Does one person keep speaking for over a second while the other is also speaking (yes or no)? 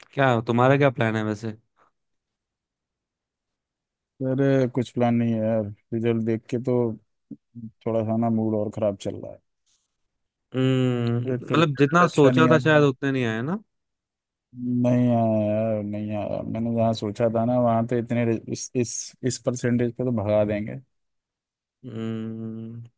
yes